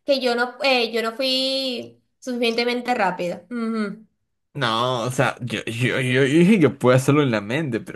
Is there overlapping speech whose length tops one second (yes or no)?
no